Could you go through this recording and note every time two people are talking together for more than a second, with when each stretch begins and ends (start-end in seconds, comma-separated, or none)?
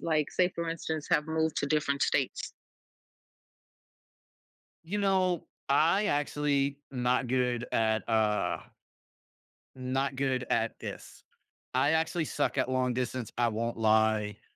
none